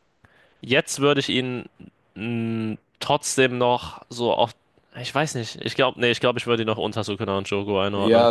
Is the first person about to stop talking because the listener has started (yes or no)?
yes